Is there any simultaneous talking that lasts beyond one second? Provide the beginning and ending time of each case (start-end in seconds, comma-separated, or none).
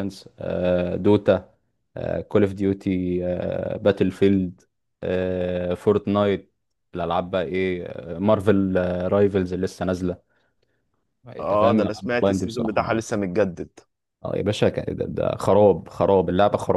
11.4-13.0